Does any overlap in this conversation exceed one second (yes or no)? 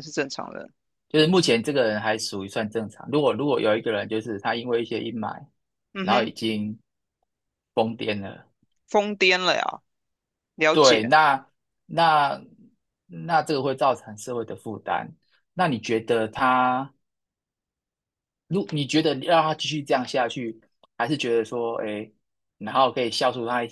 no